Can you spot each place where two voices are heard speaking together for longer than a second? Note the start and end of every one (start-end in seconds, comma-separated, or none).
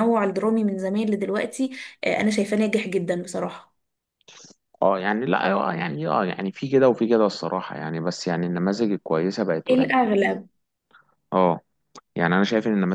none